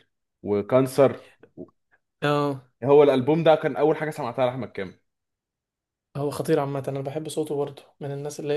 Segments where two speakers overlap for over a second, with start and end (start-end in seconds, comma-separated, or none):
none